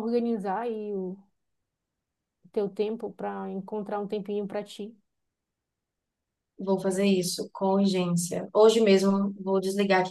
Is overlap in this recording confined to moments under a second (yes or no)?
yes